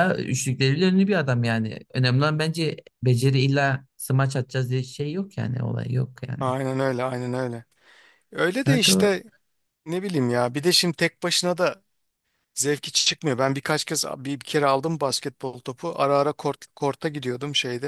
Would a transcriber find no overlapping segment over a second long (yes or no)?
yes